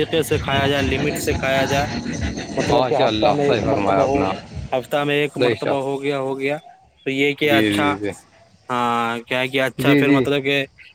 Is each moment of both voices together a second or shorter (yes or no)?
no